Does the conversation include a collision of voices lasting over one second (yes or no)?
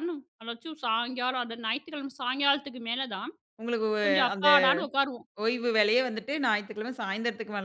no